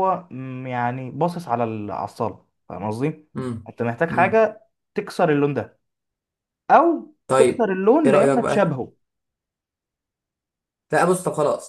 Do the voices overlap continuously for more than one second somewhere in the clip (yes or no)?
yes